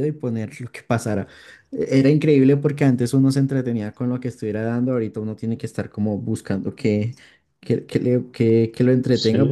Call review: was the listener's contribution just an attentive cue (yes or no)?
no